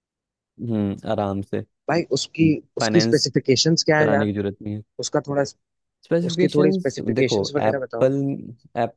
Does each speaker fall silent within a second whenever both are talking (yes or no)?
no